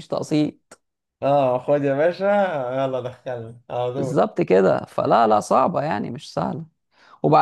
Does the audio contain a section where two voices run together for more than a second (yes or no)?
no